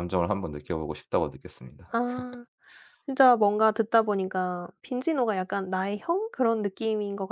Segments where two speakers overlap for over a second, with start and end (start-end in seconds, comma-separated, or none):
none